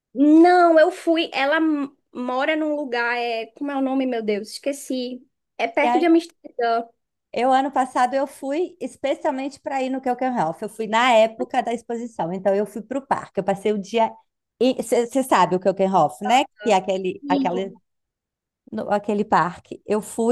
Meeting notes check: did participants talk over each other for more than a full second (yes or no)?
no